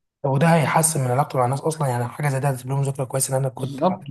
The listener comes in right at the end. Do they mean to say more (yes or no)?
yes